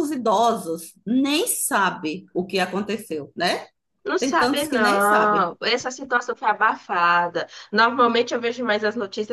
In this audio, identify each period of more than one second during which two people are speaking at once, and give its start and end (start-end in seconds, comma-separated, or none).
4.2-5.5